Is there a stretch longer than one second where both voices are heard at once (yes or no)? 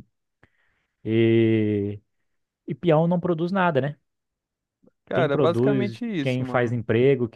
yes